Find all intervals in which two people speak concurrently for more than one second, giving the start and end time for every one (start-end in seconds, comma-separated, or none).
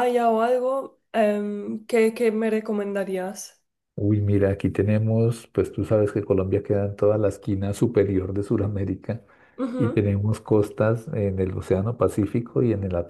none